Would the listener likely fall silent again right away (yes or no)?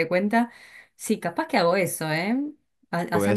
yes